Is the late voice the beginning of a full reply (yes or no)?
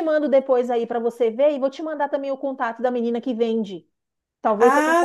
yes